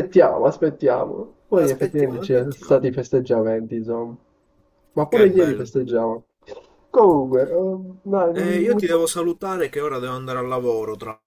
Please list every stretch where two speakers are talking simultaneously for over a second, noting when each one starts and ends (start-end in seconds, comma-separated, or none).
1.6-2.8